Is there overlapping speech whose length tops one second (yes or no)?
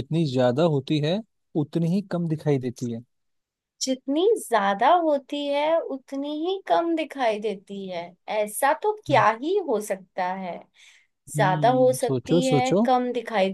yes